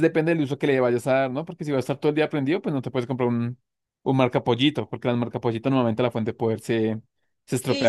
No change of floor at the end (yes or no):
no